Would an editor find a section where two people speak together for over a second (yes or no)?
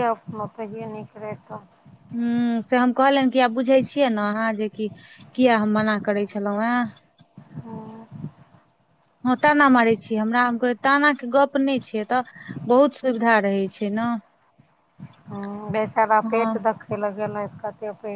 no